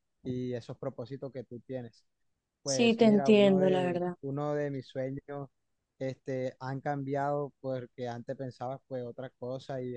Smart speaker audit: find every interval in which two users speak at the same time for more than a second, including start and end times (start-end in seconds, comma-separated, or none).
2.6-4.2